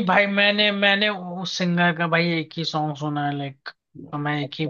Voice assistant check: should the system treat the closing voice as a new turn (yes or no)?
yes